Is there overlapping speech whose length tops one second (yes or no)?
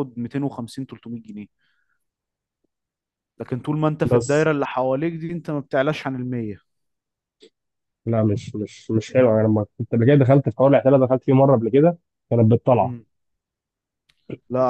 no